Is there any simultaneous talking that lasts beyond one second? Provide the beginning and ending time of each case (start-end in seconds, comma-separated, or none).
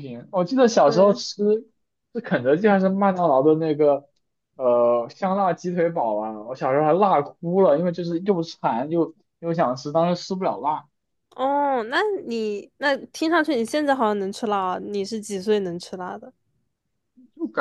none